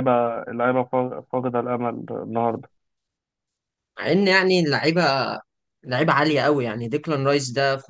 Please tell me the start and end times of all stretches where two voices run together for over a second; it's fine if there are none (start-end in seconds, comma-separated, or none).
none